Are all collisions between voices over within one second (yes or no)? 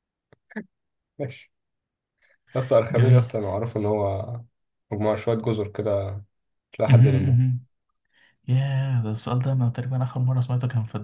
yes